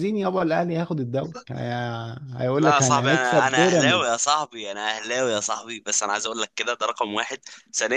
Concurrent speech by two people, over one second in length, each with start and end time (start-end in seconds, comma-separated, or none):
2.6-4.2